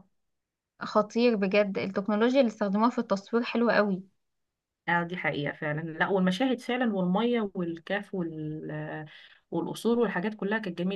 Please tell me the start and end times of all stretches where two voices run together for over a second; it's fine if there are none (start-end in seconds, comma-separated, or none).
none